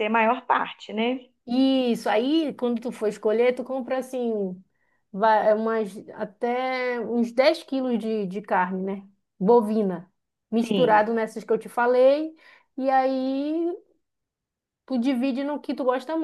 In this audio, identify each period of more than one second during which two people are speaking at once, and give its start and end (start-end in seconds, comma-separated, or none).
none